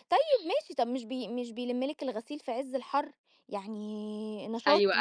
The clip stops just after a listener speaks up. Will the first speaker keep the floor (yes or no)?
no